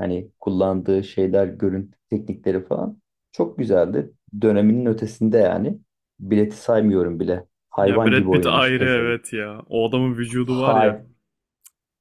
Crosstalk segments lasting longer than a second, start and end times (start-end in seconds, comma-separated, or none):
7.8-9.2